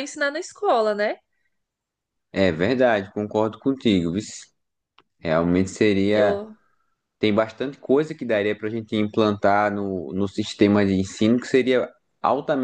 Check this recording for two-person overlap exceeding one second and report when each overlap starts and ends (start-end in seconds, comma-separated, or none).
none